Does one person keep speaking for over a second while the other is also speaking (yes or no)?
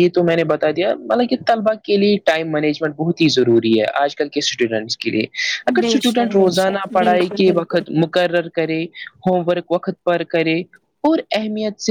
yes